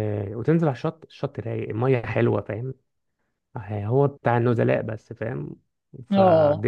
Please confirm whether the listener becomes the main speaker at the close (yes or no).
no